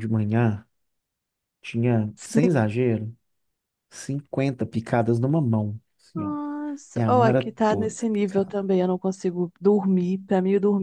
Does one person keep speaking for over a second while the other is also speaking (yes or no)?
yes